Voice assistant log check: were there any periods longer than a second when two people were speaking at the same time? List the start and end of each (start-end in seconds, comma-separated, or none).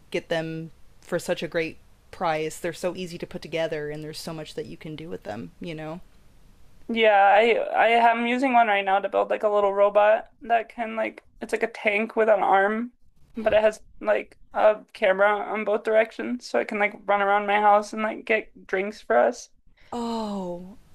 none